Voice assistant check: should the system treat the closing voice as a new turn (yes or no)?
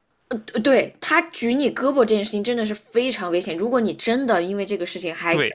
yes